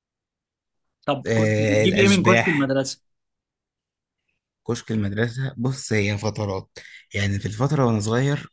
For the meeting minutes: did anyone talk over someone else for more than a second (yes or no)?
yes